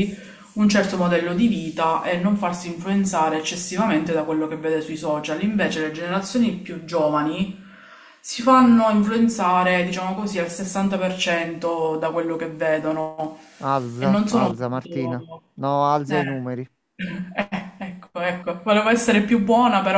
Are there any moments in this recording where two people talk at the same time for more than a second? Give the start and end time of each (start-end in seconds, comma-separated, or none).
14.0-15.2